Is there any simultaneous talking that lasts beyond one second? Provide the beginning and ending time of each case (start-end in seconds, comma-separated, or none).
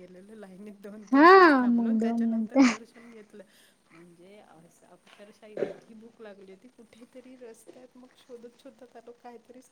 1.1-2.6